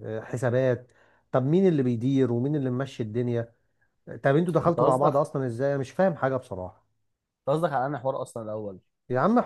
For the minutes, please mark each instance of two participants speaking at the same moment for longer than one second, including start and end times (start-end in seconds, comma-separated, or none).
none